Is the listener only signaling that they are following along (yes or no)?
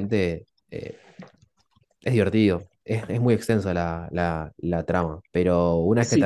no